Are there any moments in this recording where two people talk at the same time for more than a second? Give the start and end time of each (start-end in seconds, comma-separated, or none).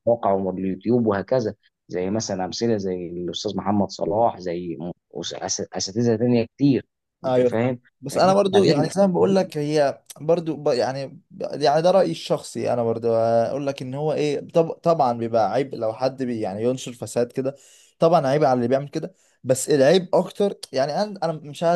7.2-8.9